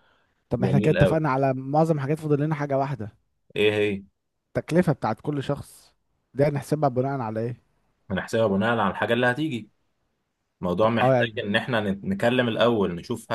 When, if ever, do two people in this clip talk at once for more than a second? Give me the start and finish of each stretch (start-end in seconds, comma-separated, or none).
none